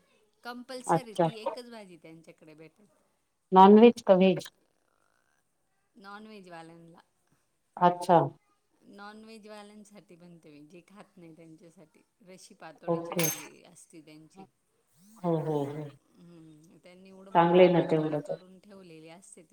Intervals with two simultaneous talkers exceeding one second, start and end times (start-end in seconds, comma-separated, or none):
none